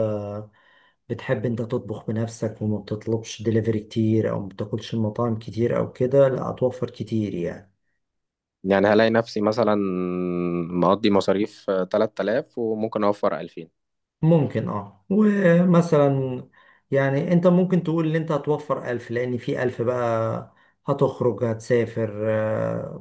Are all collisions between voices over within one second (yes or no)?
yes